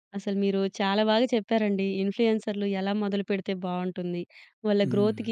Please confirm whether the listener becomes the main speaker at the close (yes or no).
no